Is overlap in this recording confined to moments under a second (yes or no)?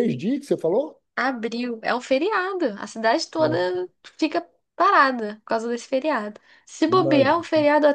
yes